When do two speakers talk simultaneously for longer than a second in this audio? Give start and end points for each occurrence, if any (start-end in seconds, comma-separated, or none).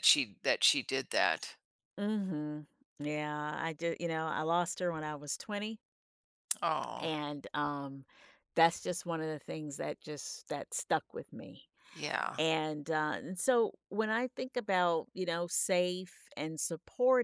none